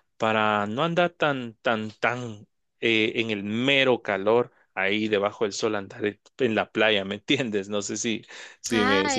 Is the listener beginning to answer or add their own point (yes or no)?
yes